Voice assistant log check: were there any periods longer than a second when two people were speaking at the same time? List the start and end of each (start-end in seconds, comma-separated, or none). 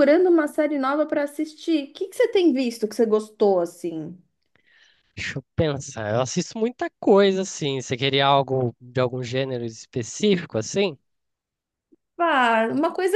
none